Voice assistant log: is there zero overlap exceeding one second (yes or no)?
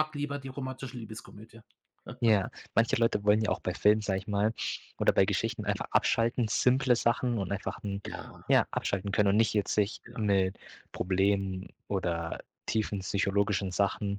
yes